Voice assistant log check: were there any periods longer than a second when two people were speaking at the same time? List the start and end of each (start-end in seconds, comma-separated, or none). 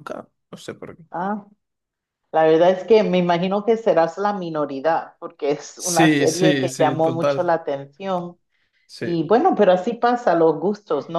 5.8-7.5